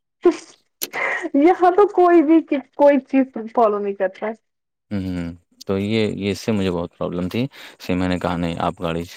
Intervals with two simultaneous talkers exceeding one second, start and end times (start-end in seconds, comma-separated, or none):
none